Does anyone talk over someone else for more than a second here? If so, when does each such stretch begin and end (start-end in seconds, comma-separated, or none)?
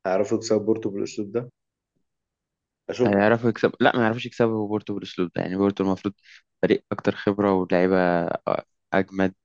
none